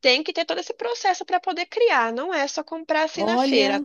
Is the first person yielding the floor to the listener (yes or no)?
no